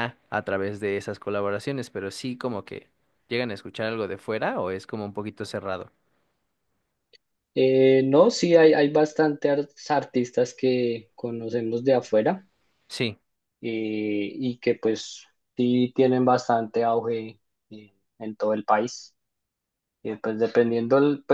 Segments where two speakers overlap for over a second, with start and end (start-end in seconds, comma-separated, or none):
none